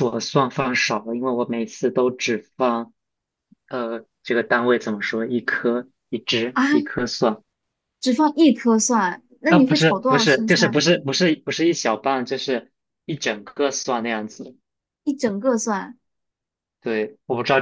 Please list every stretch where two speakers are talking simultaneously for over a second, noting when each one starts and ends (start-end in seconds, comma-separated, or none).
9.5-10.8